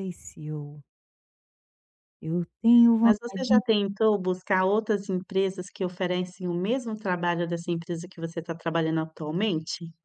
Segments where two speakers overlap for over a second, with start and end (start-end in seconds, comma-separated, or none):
none